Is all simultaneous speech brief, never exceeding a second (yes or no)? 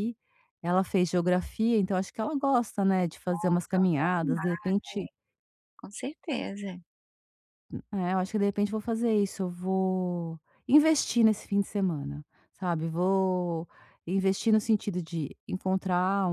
no